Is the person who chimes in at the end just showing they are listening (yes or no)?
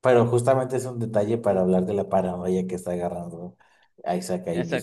no